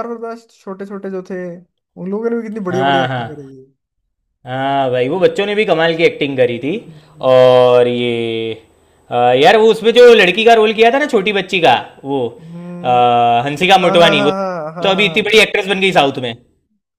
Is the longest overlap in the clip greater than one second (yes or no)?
yes